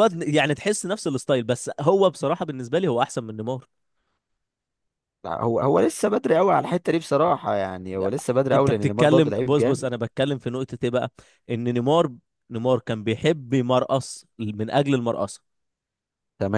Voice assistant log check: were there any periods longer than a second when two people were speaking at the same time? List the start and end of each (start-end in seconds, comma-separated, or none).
8.5-9.9